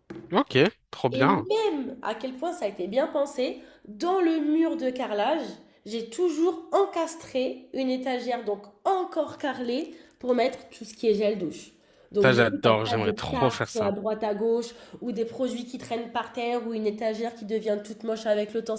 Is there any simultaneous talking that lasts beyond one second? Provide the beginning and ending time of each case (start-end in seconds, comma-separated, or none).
12.2-13.9